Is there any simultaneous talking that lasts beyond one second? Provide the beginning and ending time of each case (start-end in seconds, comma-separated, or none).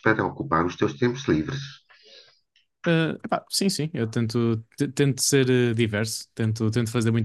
none